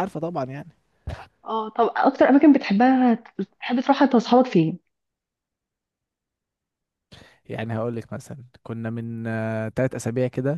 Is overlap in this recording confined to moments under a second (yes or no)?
yes